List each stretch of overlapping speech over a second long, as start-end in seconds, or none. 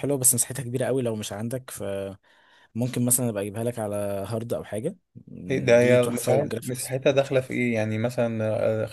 5.5-7.6